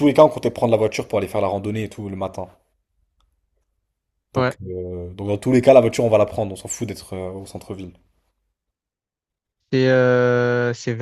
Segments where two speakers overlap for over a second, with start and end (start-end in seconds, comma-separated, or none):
none